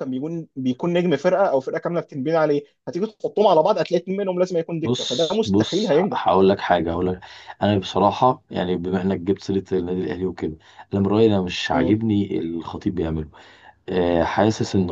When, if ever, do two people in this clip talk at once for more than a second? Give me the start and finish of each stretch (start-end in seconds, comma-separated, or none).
4.8-6.2